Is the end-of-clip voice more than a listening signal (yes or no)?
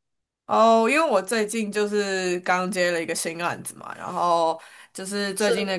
no